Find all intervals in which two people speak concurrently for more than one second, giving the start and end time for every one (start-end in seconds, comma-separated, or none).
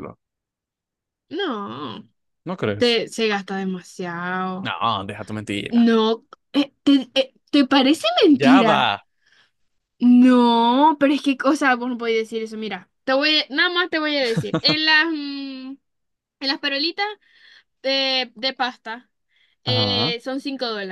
none